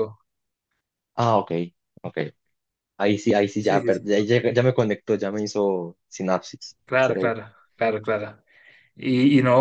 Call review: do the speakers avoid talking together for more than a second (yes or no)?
yes